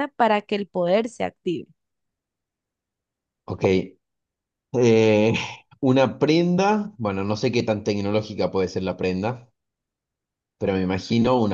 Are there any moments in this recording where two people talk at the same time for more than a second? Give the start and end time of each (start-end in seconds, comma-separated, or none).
none